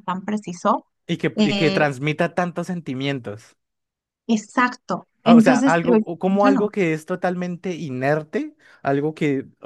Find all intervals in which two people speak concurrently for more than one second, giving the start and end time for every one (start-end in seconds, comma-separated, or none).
5.3-6.7